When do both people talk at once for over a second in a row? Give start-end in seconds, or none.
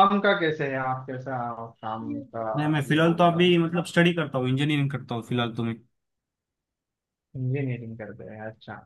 none